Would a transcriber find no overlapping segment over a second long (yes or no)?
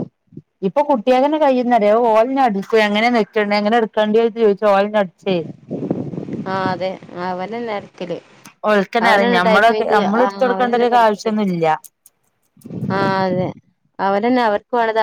no